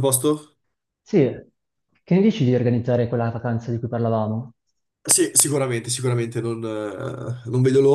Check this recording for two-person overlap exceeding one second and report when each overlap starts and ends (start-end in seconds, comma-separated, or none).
none